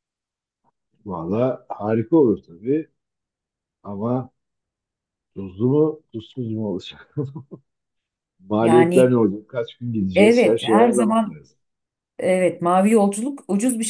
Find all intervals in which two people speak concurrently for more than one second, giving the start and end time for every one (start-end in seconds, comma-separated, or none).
10.1-11.4